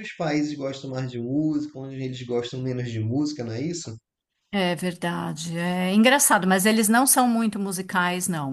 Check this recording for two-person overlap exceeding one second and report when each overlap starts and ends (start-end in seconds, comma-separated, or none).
none